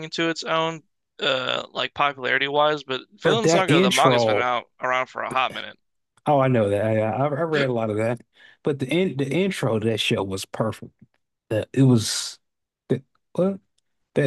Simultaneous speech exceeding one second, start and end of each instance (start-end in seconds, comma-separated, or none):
3.2-4.4